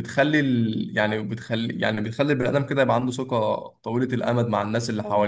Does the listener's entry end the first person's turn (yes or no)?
yes